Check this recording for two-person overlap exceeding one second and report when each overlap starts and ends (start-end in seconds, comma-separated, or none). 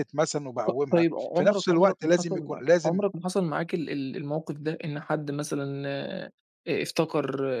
0.7-3.0